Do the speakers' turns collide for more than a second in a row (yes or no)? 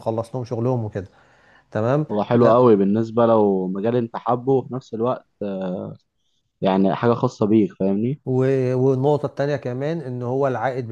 no